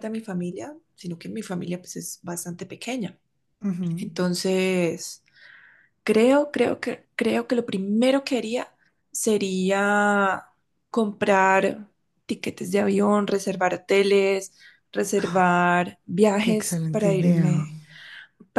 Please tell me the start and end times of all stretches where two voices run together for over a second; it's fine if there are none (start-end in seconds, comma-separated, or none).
16.4-17.7